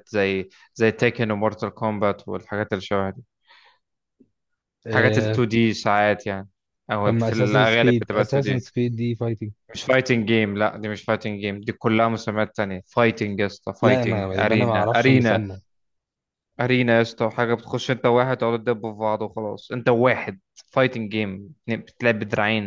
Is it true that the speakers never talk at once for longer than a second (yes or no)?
no